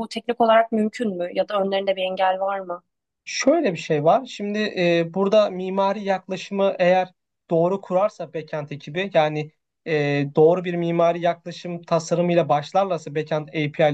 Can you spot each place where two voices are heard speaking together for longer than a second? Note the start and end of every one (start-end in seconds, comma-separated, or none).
none